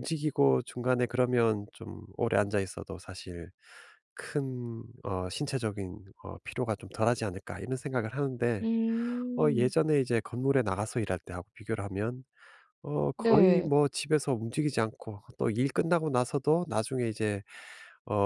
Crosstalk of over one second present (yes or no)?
no